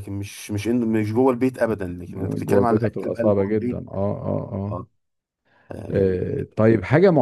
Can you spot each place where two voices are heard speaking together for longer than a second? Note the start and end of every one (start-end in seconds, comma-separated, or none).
2.4-3.8